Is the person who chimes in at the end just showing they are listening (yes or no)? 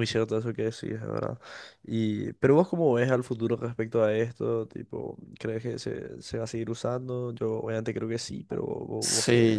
no